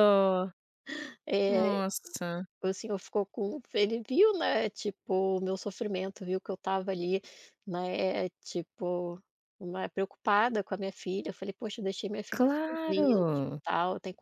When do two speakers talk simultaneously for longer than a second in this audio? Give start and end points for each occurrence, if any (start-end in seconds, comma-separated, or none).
12.3-13.6